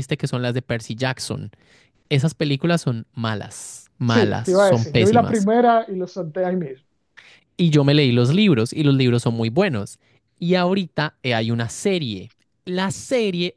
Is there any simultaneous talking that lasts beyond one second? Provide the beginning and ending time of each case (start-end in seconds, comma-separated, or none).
4.1-5.5